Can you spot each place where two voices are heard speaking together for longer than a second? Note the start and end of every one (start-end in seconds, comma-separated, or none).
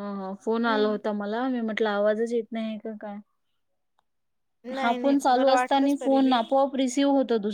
4.8-6.4